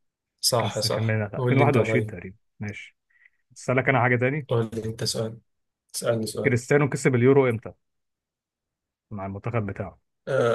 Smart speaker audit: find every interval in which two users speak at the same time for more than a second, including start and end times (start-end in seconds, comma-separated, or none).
0.6-2.2